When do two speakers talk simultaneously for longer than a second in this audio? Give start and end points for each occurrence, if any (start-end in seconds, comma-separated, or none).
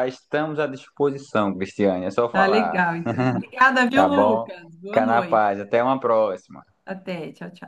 3.9-5.5